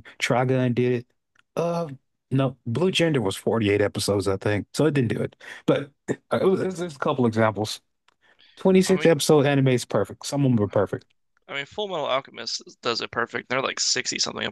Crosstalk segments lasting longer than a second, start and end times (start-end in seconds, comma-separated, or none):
none